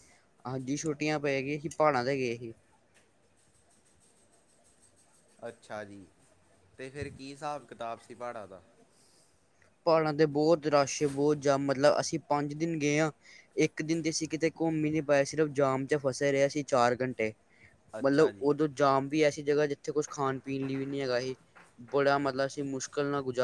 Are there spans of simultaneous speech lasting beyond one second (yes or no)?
no